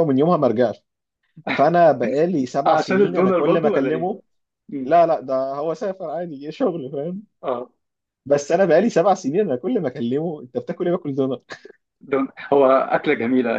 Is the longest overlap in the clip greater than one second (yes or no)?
yes